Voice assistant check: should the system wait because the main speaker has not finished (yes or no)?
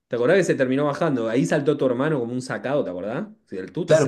no